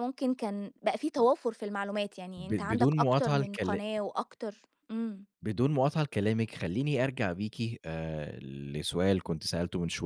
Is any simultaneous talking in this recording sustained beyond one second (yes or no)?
yes